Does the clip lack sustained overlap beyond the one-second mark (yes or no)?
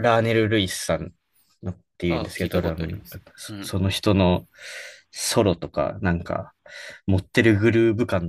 no